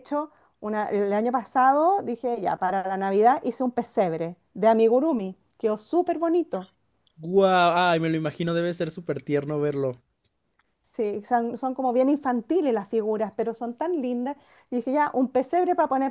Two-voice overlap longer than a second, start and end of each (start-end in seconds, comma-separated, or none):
none